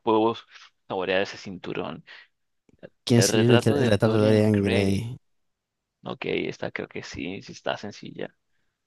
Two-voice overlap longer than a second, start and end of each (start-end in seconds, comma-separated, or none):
3.1-5.1